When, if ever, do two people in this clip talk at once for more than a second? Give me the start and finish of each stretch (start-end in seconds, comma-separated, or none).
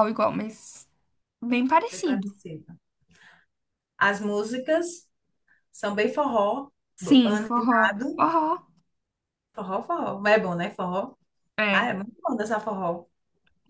7.0-8.2